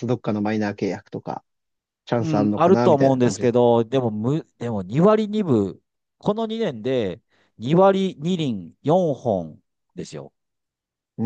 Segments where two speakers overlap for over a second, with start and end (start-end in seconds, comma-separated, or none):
2.2-3.5